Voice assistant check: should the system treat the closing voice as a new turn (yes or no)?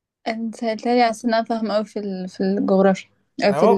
yes